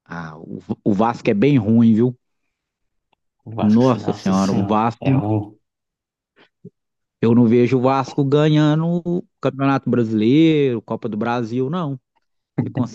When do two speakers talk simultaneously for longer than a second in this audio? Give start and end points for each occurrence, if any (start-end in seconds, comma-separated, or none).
3.6-5.1